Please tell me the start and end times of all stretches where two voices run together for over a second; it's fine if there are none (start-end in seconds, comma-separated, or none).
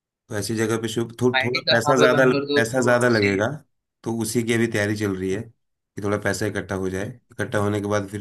1.4-3.4